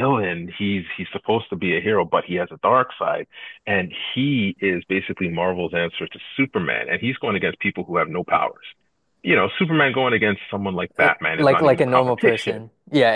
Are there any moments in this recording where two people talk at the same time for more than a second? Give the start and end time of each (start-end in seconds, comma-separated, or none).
11.0-12.6